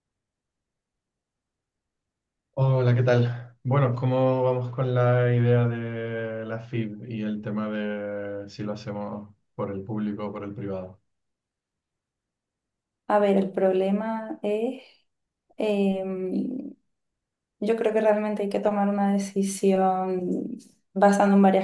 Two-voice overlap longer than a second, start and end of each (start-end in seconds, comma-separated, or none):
none